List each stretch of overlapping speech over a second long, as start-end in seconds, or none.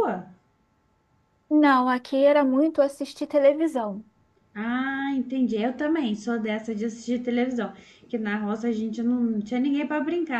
none